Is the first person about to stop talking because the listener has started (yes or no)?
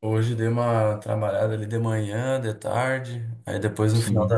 no